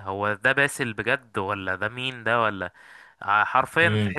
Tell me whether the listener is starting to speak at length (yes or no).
yes